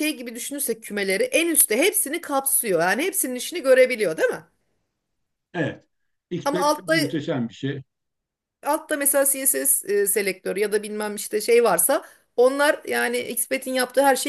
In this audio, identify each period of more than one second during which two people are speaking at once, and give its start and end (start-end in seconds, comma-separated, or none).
none